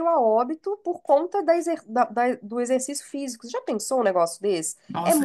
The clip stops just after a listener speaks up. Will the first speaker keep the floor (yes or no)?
no